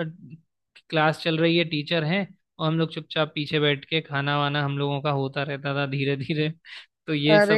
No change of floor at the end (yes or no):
no